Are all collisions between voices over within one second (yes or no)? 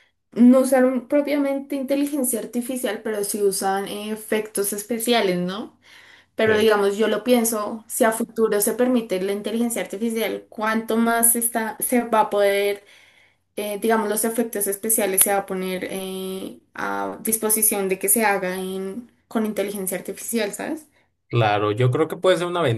yes